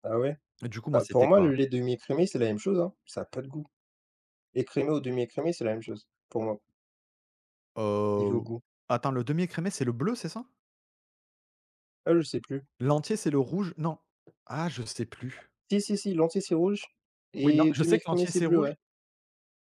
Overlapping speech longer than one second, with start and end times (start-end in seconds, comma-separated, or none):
17.4-18.7